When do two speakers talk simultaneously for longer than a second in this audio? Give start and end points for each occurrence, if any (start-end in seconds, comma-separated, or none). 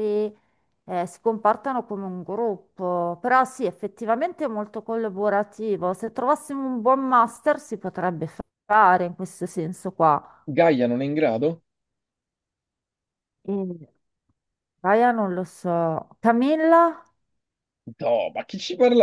none